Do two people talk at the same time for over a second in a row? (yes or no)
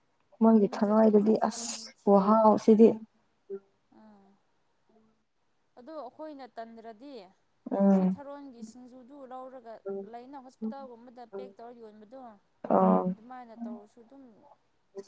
yes